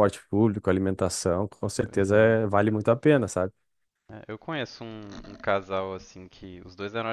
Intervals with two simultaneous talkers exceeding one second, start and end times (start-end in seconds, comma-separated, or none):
none